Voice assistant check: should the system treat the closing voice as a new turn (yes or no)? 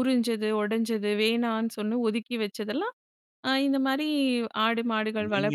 yes